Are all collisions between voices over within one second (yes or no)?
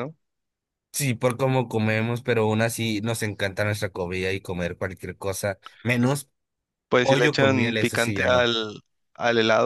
no